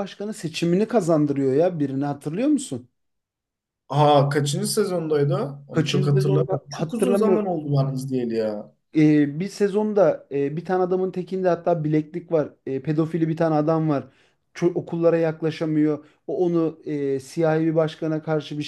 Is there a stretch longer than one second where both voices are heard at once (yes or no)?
yes